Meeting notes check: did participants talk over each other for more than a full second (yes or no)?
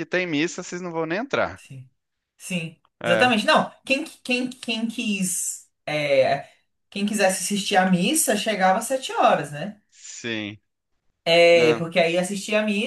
no